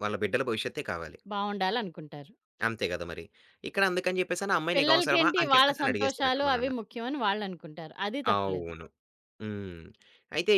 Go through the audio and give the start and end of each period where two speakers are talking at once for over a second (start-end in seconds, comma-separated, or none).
4.7-6.7